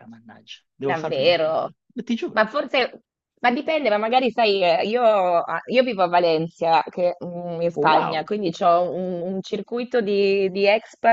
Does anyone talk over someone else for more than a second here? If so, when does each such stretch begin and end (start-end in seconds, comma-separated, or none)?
none